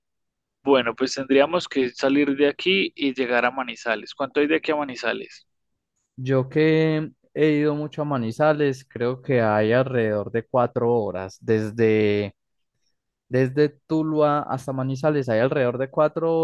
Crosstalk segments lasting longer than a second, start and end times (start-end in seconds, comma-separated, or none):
none